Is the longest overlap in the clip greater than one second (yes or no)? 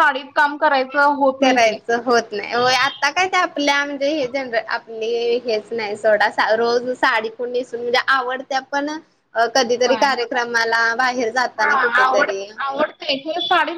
no